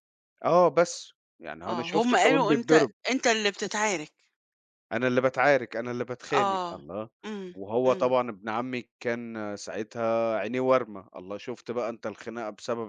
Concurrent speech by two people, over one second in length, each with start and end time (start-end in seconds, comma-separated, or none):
1.7-2.9